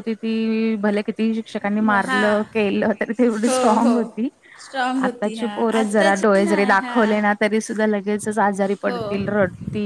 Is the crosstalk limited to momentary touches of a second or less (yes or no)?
no